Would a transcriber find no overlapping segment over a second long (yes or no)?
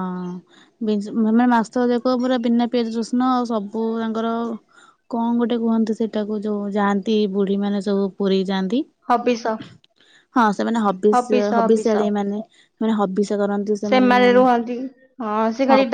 yes